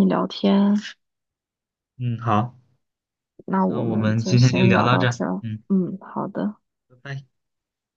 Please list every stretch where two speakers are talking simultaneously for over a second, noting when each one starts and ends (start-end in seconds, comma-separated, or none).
3.6-5.6